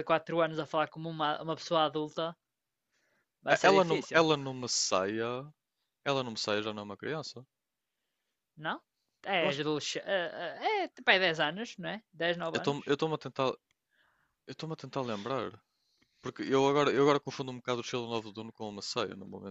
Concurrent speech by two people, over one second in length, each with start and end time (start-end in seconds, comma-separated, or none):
none